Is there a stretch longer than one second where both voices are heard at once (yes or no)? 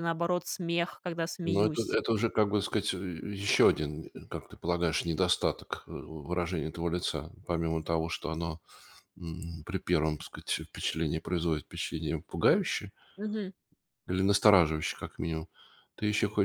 no